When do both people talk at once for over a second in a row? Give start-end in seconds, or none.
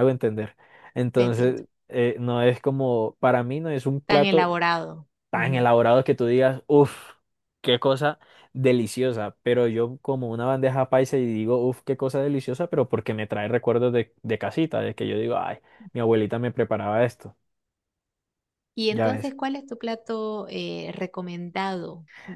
none